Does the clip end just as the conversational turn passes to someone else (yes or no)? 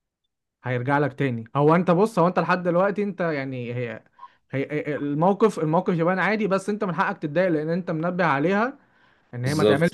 no